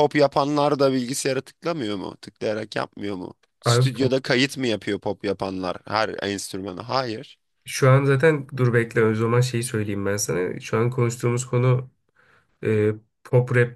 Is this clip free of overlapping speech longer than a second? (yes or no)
yes